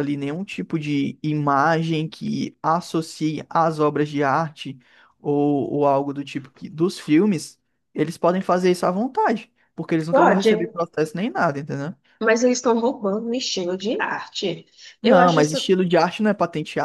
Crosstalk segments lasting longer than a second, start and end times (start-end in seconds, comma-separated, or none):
none